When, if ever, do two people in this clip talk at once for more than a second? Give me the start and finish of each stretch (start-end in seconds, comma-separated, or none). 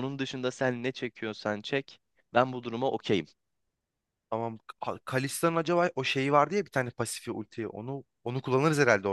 none